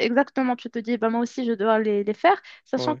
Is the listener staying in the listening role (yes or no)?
yes